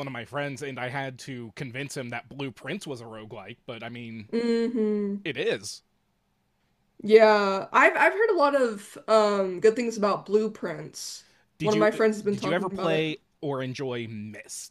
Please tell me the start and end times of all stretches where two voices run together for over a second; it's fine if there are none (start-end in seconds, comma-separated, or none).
11.6-13.1